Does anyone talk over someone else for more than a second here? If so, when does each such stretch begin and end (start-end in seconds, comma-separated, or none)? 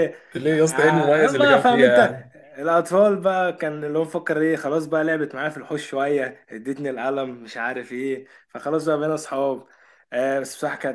0.7-2.2